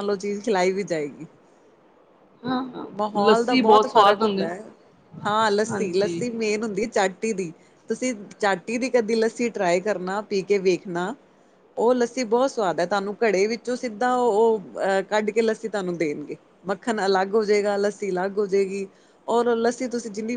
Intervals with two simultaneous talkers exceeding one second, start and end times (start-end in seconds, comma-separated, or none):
3.0-4.5